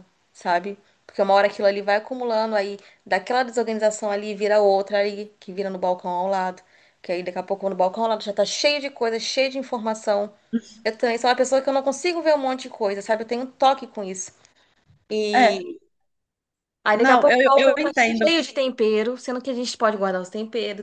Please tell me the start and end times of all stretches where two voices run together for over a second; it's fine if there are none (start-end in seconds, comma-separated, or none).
16.9-18.3